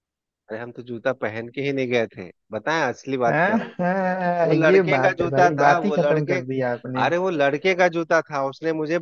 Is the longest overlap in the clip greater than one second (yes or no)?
yes